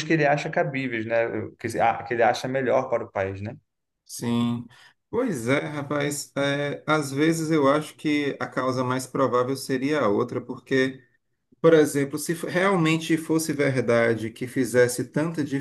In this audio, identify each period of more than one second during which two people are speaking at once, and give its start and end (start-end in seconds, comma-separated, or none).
none